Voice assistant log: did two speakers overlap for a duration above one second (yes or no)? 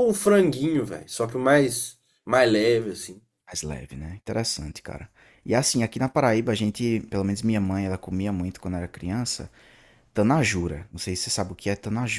no